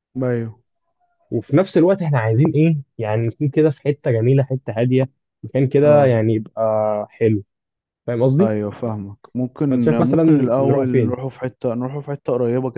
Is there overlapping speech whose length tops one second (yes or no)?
yes